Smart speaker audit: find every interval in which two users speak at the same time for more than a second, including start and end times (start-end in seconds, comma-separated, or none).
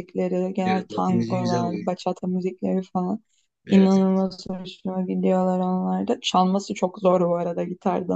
0.6-1.9